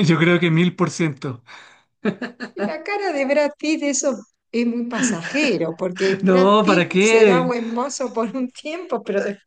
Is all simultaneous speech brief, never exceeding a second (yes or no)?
no